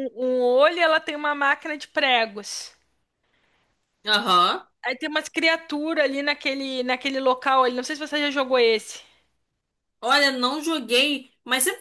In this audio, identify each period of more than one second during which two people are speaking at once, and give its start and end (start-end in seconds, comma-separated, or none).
none